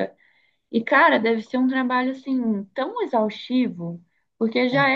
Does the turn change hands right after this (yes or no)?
no